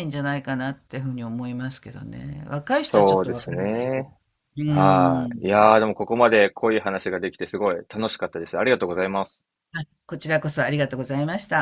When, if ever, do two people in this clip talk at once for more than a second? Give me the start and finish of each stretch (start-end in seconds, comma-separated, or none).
2.8-4.1